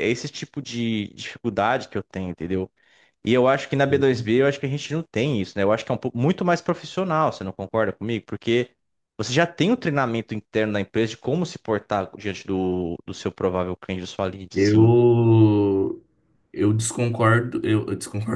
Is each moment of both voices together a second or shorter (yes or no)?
yes